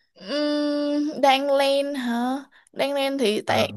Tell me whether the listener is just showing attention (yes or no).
yes